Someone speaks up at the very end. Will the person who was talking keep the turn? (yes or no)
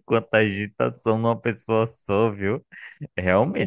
yes